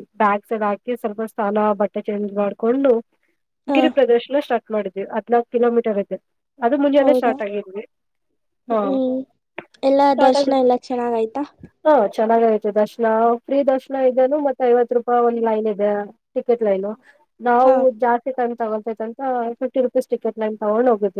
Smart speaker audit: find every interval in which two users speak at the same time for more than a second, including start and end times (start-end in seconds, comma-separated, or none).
none